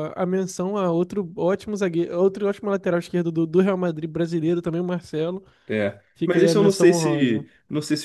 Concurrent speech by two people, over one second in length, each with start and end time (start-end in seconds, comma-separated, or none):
6.2-7.5